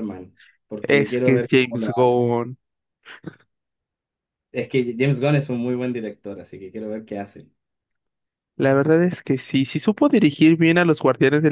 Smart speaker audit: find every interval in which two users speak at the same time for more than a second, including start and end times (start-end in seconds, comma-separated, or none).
0.8-2.1